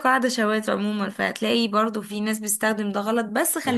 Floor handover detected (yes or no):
no